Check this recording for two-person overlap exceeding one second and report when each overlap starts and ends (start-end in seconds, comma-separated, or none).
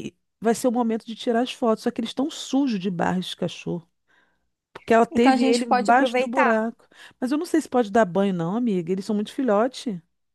5.1-6.6